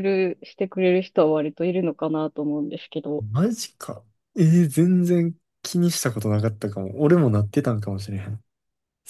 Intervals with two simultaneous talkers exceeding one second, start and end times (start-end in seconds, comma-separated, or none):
none